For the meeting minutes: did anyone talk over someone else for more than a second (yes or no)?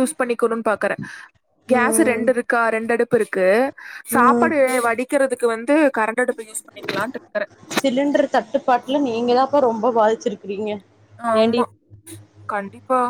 no